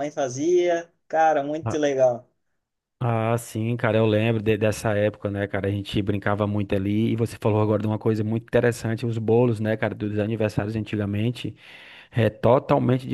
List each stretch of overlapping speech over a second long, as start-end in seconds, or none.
none